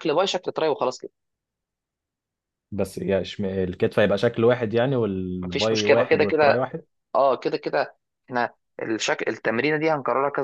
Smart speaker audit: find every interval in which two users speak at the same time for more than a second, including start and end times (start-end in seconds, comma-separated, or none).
5.4-6.7